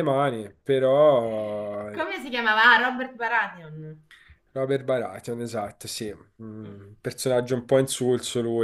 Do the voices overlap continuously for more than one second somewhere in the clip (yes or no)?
no